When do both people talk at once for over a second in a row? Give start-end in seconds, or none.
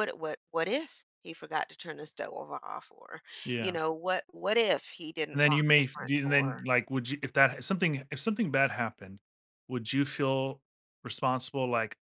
5.3-6.6